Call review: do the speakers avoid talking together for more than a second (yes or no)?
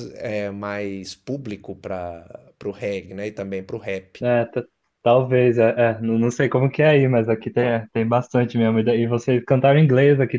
yes